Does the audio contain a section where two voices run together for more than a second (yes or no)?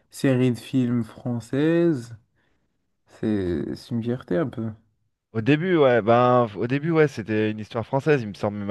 no